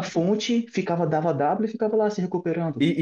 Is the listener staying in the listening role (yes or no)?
no